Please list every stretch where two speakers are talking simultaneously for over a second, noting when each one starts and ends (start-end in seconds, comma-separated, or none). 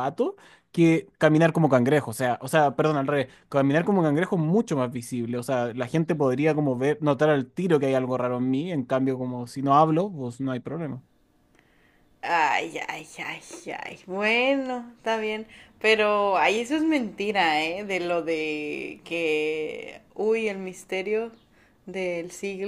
none